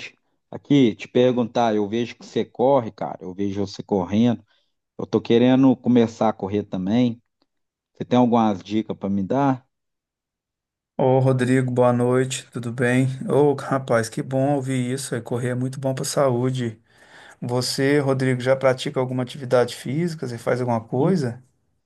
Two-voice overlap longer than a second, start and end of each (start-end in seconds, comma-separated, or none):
none